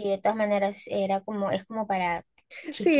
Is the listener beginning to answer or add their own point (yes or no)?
yes